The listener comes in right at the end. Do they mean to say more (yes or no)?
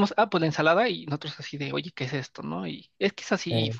no